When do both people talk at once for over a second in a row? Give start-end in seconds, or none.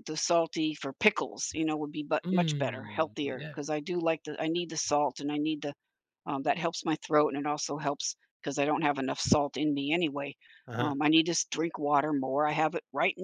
2.2-3.6